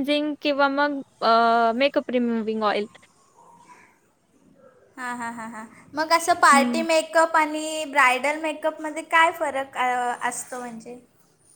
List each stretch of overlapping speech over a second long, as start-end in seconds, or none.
none